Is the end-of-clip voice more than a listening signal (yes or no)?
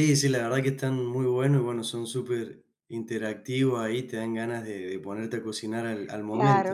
yes